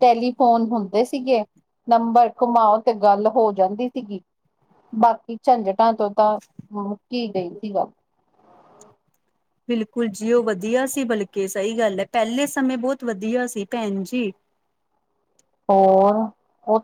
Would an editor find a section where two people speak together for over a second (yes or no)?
no